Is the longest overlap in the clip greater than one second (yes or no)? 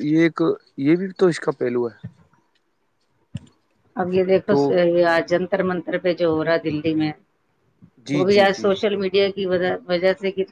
no